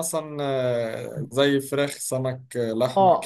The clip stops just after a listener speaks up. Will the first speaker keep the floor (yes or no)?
no